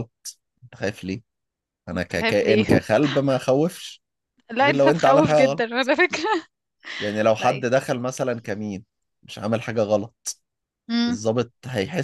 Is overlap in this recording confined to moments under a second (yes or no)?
no